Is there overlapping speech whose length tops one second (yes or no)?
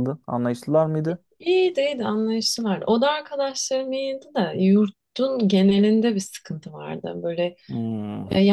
no